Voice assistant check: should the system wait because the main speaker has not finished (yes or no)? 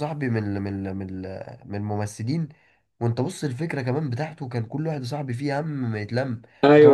no